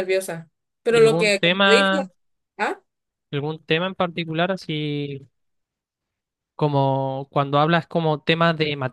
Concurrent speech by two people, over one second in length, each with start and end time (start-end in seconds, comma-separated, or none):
0.9-2.1